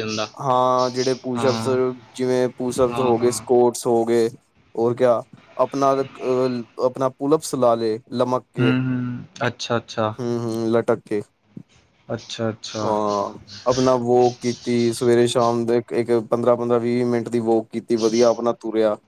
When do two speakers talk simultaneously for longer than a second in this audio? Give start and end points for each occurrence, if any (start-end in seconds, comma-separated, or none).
none